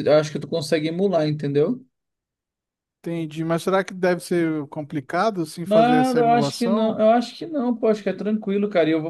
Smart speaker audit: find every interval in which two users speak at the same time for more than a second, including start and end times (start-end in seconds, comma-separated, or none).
5.6-7.0